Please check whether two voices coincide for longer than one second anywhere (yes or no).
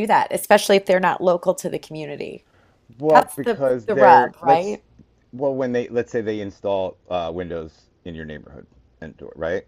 yes